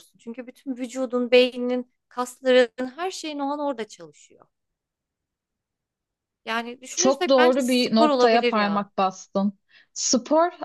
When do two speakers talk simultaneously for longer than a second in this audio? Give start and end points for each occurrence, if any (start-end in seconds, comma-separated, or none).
7.0-8.9